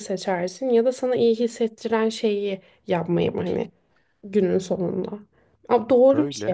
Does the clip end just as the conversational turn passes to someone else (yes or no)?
no